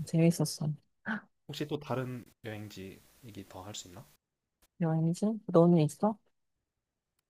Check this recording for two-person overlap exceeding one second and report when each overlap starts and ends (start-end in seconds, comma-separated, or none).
none